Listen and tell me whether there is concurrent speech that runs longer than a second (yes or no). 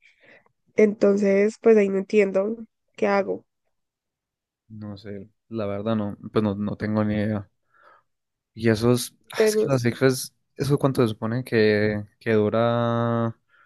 no